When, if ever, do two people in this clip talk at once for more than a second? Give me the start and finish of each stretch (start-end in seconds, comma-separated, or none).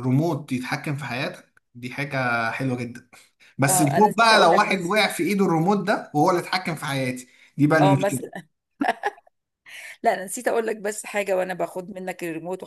3.7-5.1